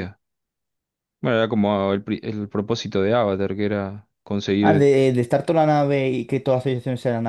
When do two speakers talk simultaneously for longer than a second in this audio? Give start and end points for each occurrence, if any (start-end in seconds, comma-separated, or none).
none